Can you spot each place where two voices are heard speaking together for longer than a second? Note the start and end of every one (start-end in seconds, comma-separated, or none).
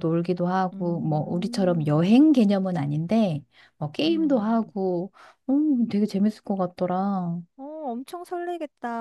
0.7-2.1